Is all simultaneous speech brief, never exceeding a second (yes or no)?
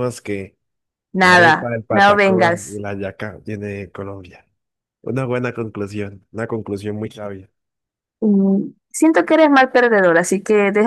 no